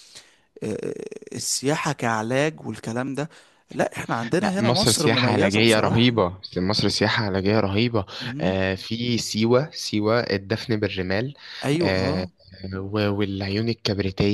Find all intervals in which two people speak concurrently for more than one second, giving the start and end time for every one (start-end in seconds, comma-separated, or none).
4.4-6.1